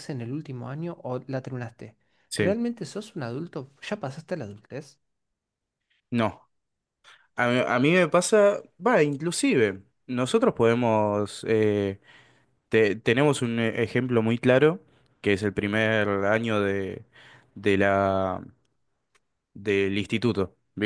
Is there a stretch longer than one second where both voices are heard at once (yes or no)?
no